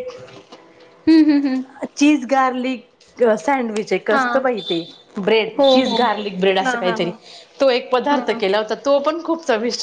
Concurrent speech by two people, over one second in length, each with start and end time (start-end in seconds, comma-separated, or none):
none